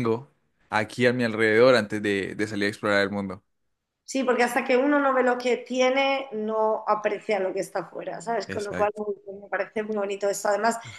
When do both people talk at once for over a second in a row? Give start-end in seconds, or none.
none